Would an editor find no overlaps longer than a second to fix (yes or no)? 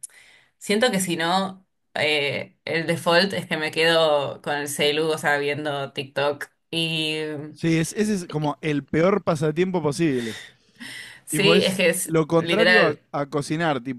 no